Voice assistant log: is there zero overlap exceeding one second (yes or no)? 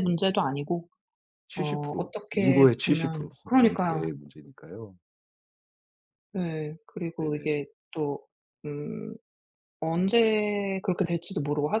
no